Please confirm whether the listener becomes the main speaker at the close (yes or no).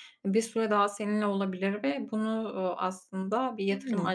no